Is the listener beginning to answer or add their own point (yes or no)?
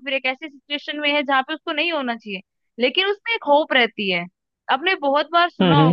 no